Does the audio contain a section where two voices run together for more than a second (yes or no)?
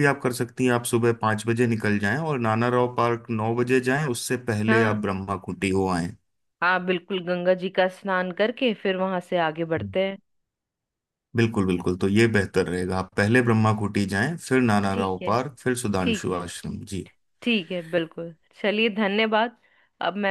no